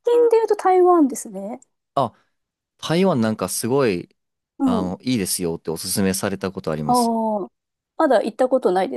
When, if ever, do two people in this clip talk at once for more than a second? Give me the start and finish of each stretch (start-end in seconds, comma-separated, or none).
none